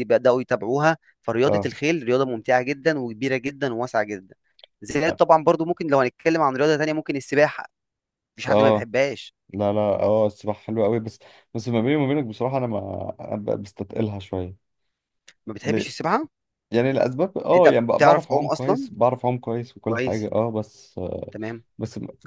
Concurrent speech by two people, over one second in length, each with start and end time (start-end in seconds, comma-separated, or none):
17.5-18.9